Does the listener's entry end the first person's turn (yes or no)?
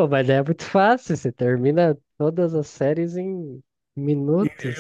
yes